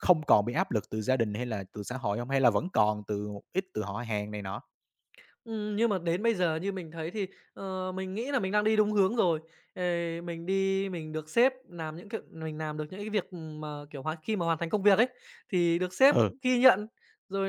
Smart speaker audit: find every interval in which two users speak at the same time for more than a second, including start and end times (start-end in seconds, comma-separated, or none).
none